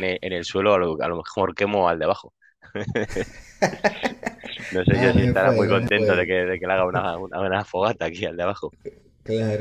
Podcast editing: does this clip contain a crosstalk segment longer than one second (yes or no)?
yes